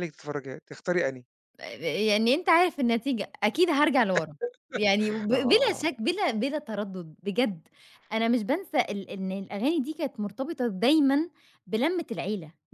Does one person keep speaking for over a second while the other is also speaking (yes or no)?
no